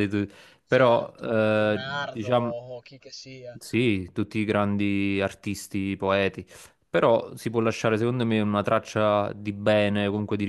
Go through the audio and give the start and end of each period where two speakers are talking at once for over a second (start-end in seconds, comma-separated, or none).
0.7-2.5